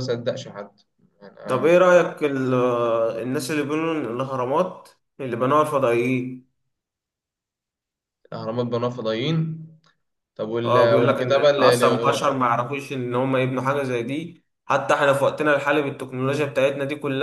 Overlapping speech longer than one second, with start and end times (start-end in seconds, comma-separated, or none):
10.6-12.3